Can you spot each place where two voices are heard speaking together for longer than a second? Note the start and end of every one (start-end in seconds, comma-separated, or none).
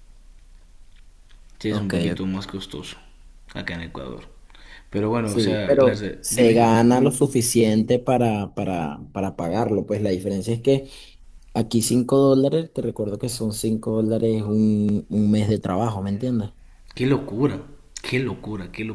5.2-6.6